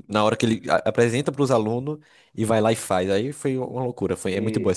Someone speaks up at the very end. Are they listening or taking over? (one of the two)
taking over